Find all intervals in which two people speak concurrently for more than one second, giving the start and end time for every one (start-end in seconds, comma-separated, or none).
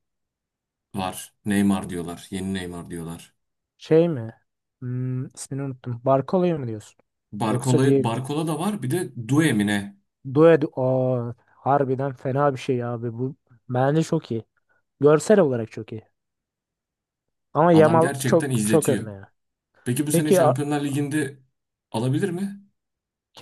17.7-19.0